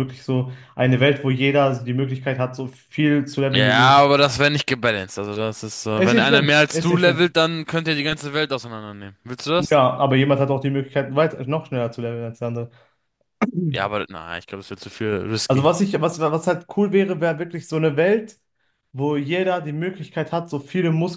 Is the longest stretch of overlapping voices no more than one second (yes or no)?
no